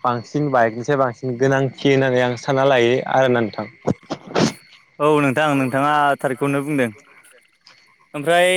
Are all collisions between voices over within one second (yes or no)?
yes